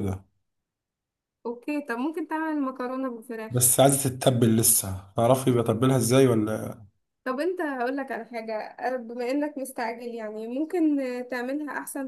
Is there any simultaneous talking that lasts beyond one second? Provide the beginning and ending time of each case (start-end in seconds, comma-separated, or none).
none